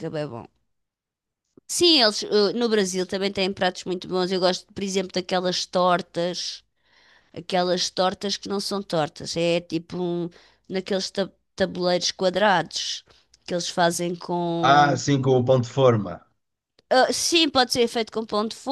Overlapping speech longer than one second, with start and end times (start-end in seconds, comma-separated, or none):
none